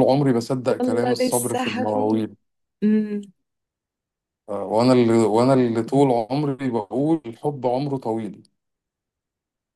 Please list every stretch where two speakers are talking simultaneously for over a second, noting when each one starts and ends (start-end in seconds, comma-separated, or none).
0.7-2.3